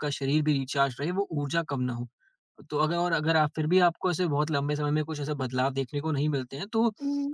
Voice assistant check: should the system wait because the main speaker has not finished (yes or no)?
yes